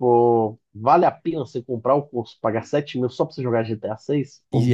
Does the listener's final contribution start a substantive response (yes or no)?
yes